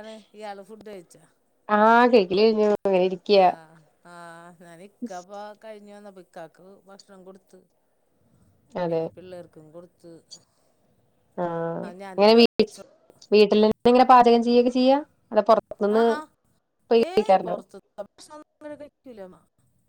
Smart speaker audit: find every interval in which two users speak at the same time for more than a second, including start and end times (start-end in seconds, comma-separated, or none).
none